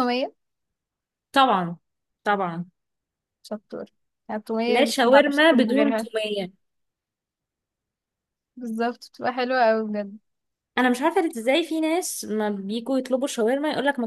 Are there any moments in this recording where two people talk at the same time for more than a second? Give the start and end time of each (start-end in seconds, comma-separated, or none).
4.7-6.1